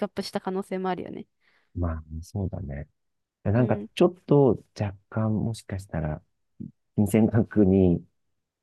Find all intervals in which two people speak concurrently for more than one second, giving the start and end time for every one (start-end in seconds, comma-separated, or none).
none